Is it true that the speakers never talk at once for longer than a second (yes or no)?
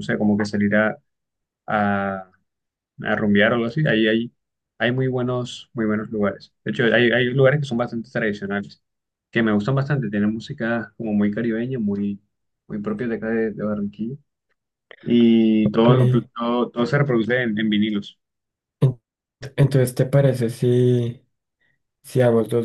yes